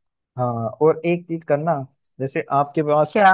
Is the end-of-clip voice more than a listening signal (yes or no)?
no